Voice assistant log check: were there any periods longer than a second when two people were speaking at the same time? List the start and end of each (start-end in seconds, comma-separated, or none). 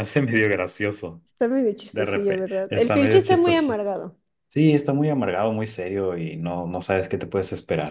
1.9-3.7